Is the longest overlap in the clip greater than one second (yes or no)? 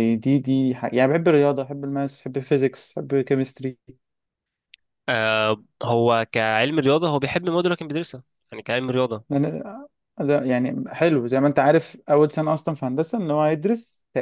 no